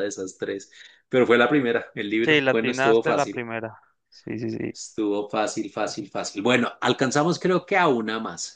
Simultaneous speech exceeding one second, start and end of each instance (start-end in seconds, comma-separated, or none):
2.2-3.5